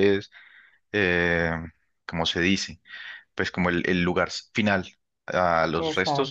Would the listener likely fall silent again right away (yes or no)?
yes